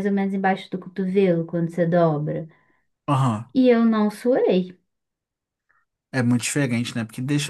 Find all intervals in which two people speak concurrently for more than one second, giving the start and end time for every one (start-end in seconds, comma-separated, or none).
none